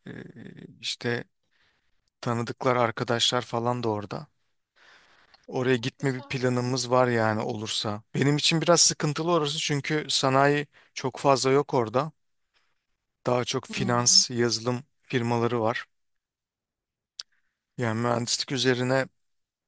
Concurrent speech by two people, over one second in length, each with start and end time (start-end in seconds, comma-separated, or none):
6.0-7.5